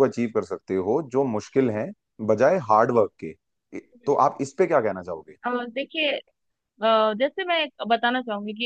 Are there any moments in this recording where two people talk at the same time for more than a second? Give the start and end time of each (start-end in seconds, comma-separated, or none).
none